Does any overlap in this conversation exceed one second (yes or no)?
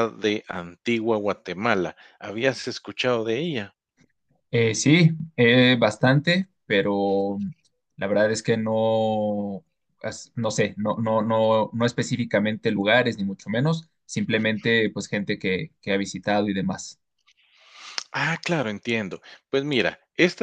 no